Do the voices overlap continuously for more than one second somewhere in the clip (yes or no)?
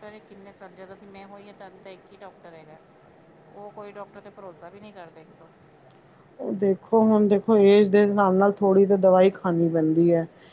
no